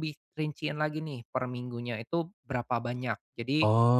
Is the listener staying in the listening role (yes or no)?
yes